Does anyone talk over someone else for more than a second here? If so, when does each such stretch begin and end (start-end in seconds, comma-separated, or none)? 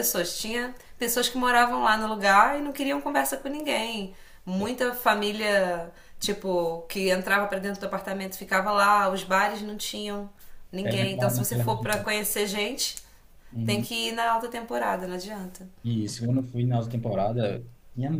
10.8-12.0